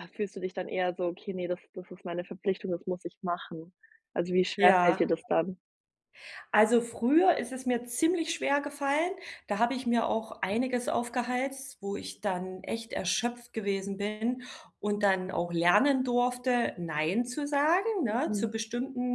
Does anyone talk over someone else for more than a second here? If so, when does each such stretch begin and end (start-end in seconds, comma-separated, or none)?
none